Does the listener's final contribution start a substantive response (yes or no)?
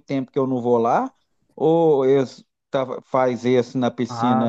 yes